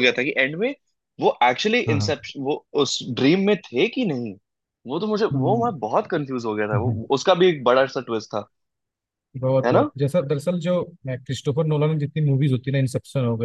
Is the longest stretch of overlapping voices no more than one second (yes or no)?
yes